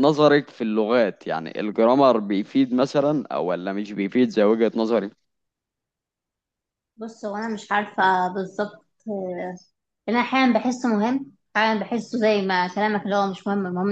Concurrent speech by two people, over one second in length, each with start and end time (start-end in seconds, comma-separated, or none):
none